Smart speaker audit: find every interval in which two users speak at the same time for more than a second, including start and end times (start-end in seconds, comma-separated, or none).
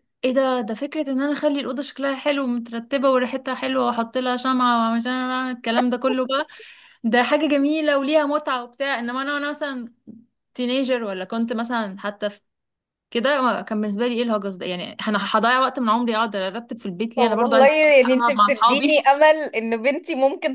17.2-18.9